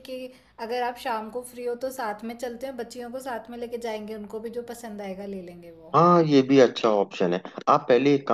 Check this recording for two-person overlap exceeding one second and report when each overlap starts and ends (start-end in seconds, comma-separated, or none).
none